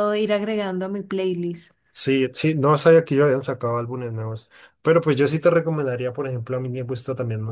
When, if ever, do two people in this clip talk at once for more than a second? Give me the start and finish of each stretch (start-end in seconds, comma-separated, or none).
none